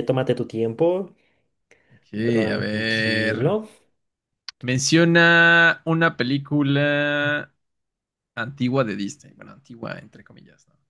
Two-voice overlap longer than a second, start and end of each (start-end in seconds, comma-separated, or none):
2.2-3.5